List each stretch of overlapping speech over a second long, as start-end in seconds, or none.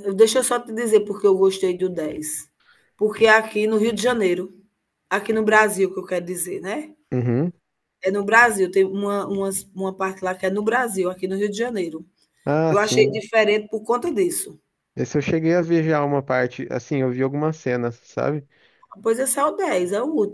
none